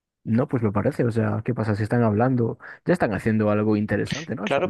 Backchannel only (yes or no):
no